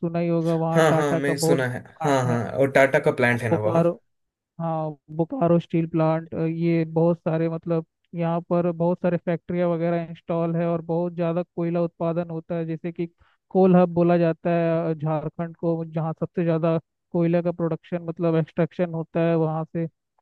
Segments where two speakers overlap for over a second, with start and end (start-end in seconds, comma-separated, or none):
0.8-2.4